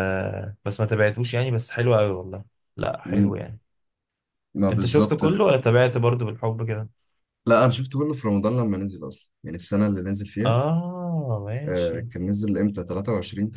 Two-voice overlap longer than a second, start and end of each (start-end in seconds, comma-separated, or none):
none